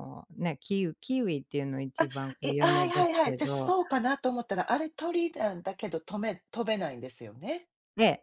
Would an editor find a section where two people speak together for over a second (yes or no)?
yes